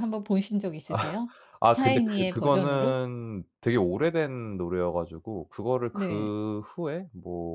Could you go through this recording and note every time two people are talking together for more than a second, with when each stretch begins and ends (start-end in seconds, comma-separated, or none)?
1.6-3.0